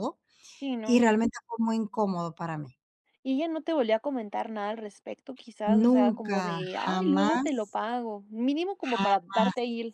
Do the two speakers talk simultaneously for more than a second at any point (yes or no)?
yes